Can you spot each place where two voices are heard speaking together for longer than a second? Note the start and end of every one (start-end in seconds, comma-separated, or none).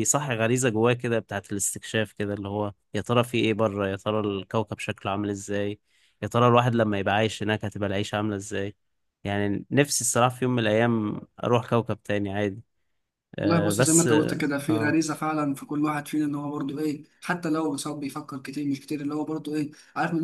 13.4-14.9